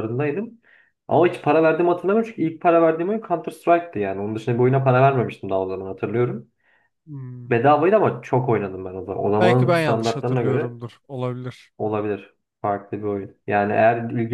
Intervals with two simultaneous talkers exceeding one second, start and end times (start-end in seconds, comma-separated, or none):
9.4-10.7